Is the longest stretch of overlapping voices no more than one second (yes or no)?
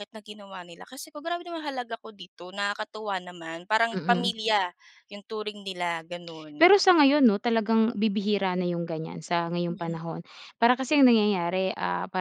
yes